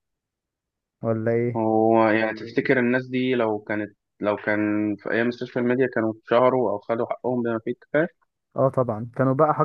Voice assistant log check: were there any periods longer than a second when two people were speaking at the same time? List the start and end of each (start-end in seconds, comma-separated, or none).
none